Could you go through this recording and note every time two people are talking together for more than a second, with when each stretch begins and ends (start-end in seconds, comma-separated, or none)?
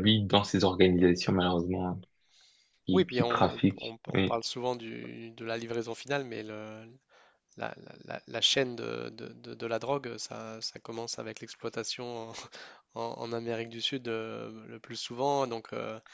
2.9-4.4